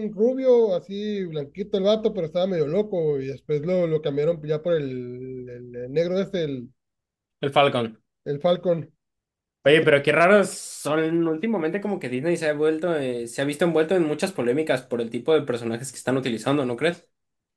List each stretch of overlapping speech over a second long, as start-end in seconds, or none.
none